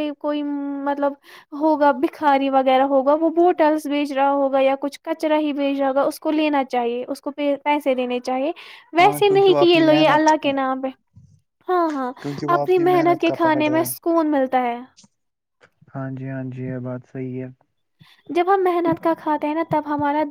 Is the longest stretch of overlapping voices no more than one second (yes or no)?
no